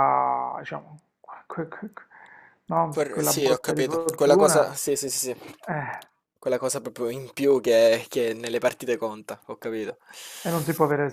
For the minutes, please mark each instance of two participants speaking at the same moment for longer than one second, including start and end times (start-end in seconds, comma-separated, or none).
2.9-4.7